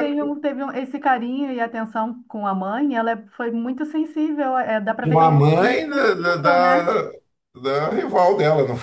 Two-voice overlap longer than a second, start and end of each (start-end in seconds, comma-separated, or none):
5.0-6.9